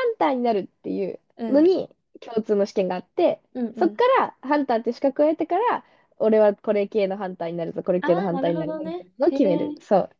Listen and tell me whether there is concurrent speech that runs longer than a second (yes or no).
yes